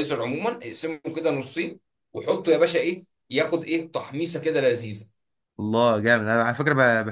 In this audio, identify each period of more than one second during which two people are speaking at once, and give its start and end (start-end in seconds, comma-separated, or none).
none